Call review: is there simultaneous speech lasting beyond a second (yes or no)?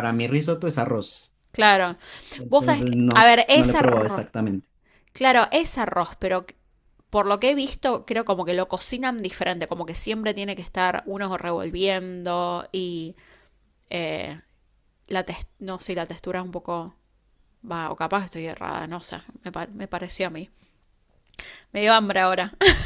yes